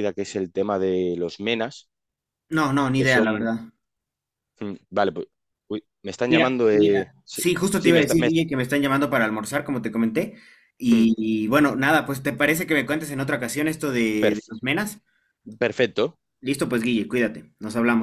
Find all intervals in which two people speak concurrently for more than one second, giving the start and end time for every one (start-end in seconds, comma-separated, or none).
6.3-8.3